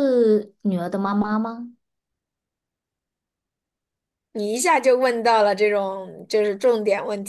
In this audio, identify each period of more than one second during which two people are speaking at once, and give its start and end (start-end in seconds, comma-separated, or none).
none